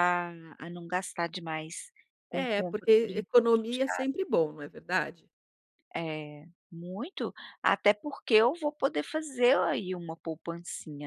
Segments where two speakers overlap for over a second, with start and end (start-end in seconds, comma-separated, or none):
2.3-4.2